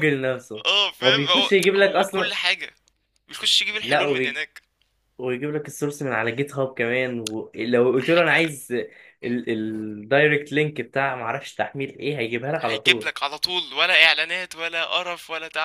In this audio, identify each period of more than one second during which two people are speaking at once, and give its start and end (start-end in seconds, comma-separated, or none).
1.0-2.3